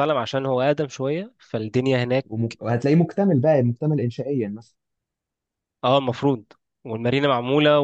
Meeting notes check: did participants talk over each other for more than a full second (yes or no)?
no